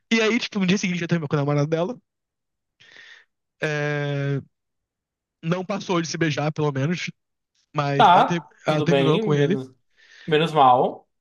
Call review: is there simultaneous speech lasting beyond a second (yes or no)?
yes